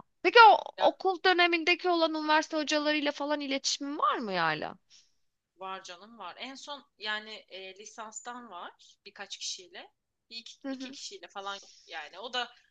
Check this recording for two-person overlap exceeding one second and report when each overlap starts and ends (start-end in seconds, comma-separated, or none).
none